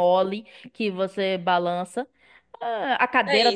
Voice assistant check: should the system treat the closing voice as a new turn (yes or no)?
yes